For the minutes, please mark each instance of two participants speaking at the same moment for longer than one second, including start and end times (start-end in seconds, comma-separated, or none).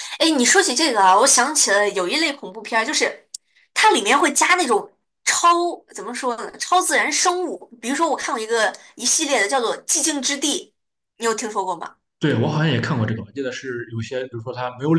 none